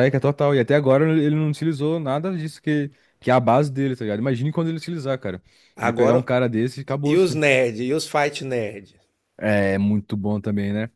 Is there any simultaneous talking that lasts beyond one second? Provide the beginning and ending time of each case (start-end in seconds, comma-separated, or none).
none